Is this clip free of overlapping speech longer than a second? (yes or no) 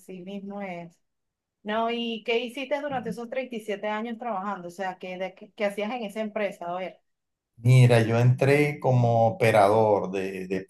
yes